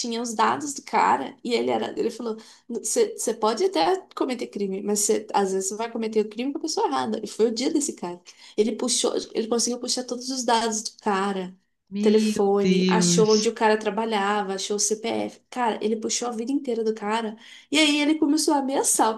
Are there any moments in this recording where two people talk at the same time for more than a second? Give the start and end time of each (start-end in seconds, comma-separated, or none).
12.0-13.5